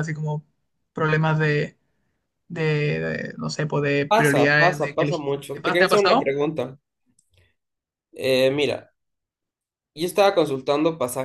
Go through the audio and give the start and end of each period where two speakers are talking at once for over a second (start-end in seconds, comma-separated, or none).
4.1-6.3